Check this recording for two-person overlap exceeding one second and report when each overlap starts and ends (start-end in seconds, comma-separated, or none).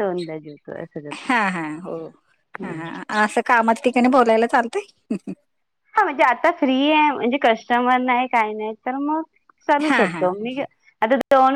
none